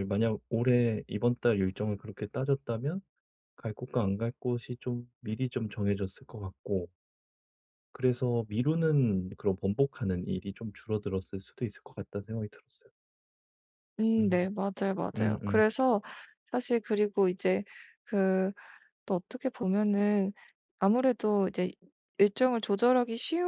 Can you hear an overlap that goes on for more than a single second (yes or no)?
no